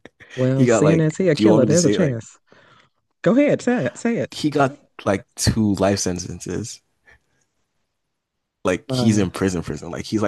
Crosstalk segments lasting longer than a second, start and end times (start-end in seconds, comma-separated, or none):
0.5-2.2